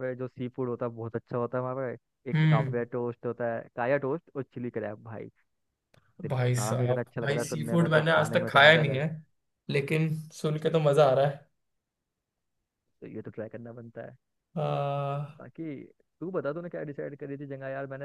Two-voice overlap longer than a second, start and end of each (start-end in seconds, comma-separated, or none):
6.3-9.1